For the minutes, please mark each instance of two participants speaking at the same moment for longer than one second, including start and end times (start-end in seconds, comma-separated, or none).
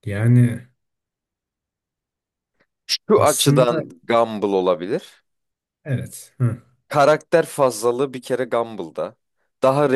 none